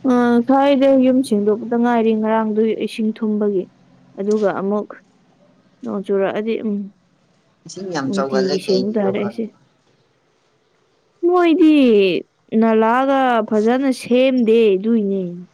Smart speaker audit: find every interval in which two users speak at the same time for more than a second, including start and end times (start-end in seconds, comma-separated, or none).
8.0-9.4